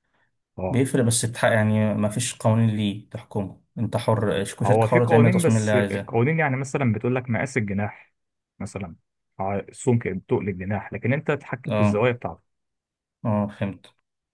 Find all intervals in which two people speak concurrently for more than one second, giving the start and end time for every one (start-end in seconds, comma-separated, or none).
4.7-6.2